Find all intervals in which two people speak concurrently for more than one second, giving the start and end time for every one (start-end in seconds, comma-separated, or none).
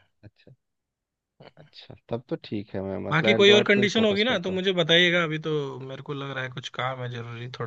3.1-4.6